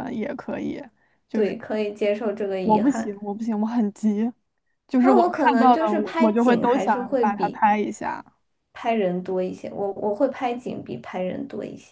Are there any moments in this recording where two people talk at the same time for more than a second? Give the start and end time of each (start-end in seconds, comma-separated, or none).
5.0-7.6